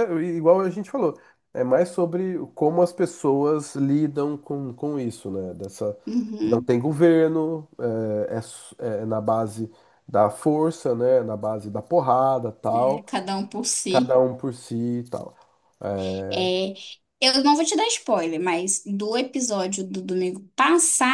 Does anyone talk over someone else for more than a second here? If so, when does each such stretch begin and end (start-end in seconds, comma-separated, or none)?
none